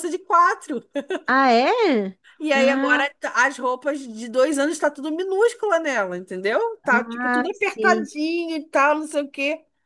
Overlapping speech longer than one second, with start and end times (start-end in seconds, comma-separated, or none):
6.8-8.1